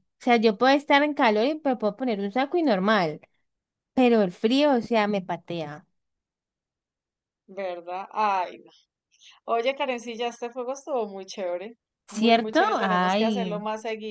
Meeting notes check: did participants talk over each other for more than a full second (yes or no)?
yes